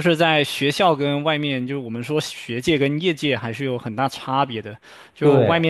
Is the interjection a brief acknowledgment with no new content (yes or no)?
yes